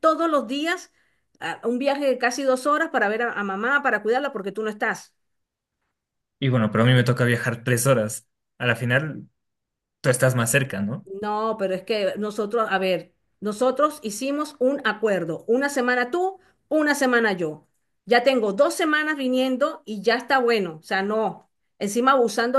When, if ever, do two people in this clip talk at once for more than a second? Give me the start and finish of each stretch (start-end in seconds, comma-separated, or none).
none